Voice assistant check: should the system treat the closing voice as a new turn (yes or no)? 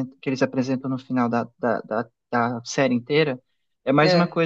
no